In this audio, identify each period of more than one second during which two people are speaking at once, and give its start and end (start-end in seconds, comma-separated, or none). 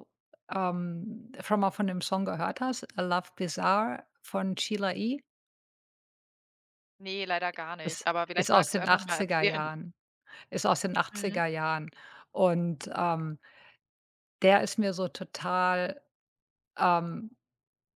7.8-9.7